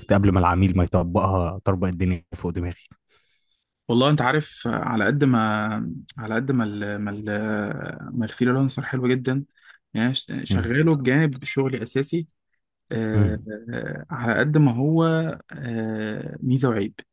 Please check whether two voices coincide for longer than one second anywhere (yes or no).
no